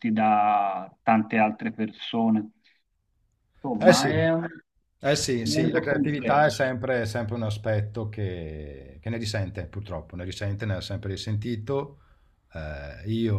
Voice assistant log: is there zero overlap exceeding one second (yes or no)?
no